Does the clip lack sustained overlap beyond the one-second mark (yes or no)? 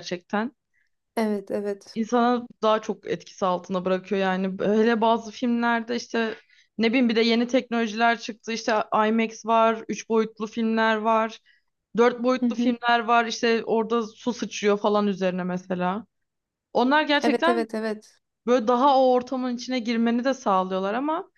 yes